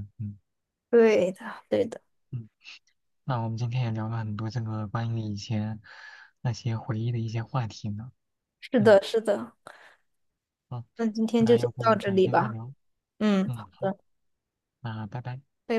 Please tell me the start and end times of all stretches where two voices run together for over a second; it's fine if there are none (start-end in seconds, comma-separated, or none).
11.4-12.6